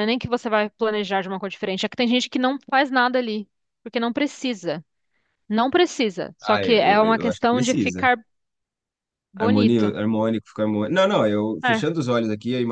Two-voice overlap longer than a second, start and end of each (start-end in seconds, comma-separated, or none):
6.4-8.0